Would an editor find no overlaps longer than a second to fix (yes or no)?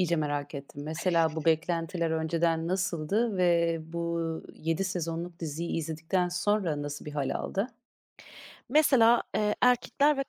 yes